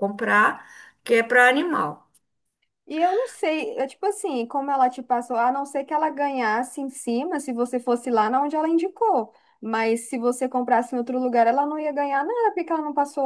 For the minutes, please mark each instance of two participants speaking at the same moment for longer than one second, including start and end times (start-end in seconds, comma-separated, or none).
none